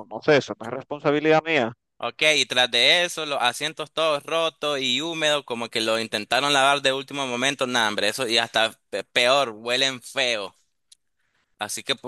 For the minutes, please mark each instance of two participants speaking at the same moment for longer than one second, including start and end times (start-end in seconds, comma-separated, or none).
none